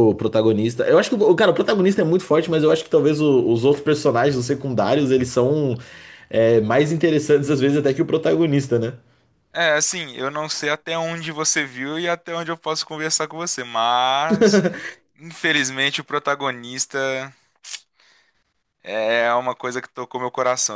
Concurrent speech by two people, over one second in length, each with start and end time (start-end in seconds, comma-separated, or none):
none